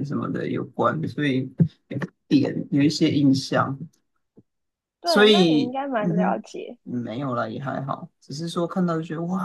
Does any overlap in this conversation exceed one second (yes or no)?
yes